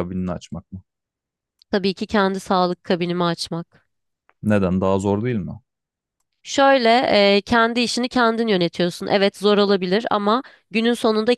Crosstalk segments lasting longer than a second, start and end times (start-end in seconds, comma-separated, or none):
none